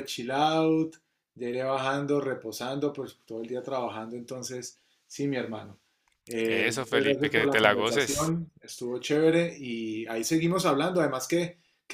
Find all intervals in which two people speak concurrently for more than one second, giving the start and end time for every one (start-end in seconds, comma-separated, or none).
6.5-8.3